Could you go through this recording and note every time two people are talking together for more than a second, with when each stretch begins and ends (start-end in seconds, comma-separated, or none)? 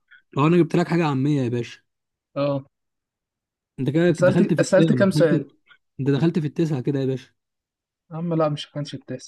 4.1-5.4